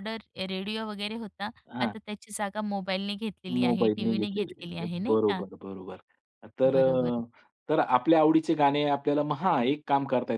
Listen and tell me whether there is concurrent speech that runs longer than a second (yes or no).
yes